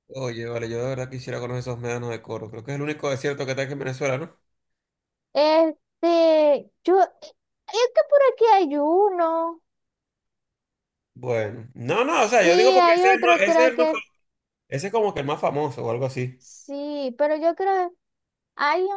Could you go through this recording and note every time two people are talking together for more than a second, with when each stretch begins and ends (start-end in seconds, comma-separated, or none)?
12.1-14.0